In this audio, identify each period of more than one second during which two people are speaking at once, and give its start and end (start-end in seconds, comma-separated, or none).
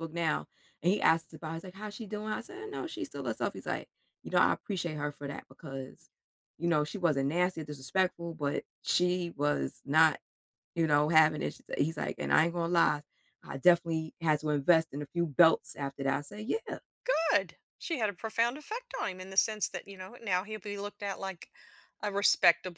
none